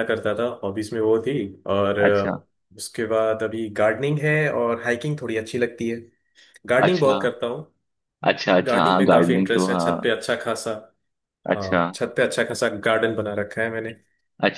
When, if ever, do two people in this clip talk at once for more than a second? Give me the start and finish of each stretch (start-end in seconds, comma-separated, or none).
8.7-10.1